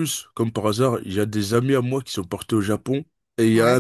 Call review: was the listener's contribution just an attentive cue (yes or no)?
yes